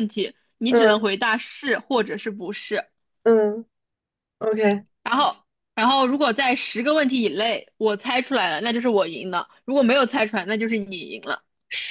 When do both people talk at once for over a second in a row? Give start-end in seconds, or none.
none